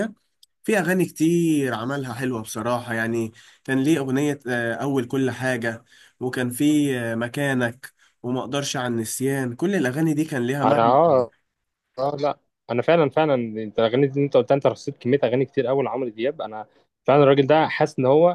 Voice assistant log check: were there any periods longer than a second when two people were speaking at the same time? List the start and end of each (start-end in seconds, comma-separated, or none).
none